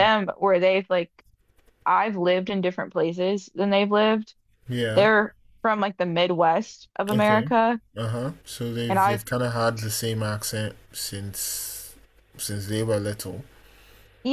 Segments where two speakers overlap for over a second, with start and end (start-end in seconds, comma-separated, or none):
none